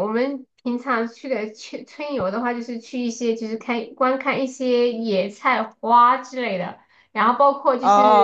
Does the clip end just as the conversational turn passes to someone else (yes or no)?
yes